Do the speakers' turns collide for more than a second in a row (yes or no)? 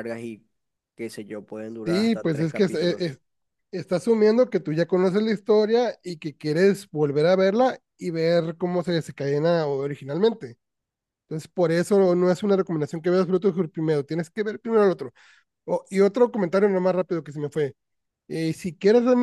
yes